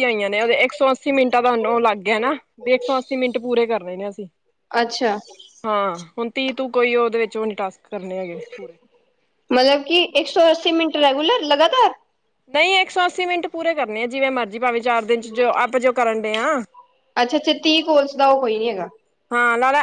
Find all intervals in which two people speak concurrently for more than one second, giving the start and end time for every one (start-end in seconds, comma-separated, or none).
none